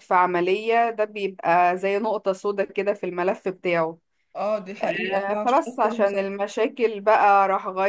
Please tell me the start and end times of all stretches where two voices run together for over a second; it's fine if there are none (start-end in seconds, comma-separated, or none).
4.8-6.3